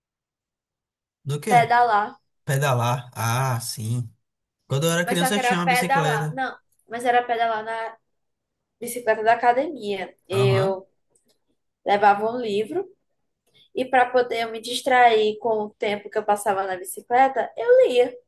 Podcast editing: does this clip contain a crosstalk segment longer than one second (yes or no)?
yes